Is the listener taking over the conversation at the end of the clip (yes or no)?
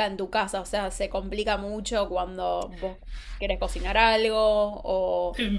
yes